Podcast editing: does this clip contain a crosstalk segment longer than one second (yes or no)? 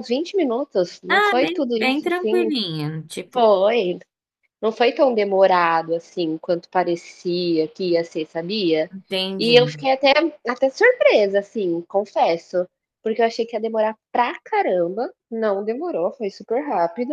yes